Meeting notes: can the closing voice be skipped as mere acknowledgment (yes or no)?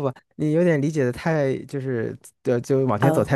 yes